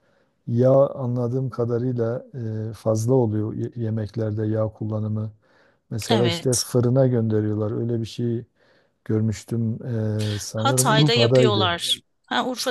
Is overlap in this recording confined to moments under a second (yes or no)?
no